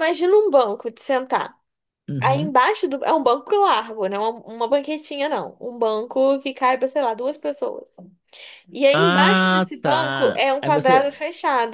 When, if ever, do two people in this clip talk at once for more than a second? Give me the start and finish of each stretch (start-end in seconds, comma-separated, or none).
8.9-11.2